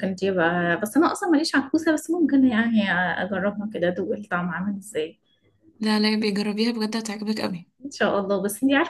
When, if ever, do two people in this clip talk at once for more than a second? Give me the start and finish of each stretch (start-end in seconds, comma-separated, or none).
none